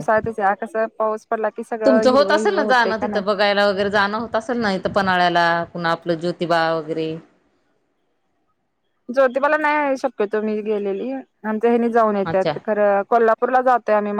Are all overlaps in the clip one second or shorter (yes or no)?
no